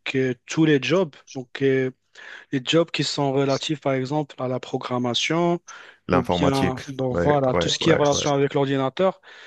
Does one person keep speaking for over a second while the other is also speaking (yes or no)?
yes